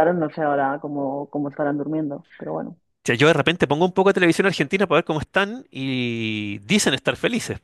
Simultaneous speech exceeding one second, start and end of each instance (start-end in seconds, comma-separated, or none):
none